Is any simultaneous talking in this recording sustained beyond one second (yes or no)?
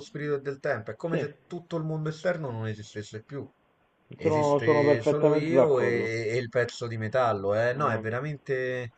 yes